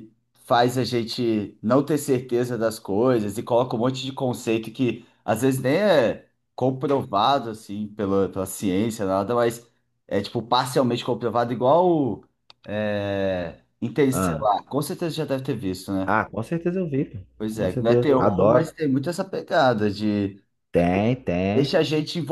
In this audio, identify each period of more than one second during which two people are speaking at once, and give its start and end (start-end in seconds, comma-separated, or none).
17.4-18.7